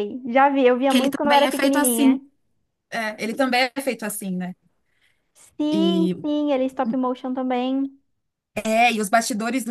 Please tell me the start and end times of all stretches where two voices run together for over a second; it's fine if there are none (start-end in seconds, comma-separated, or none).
0.9-2.2